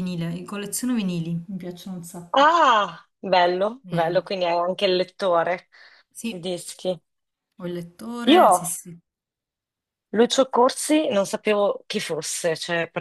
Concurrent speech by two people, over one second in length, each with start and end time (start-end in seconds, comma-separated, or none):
none